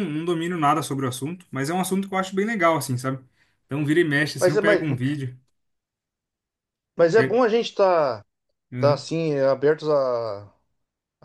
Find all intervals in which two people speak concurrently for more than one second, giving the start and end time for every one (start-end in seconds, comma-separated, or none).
none